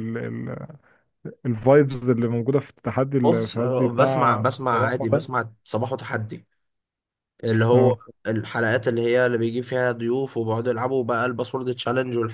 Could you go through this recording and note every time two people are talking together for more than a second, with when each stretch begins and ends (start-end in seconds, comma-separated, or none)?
3.2-5.4